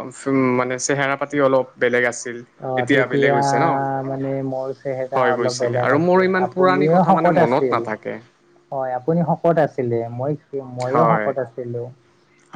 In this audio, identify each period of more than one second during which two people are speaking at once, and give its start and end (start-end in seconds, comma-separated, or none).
5.2-7.8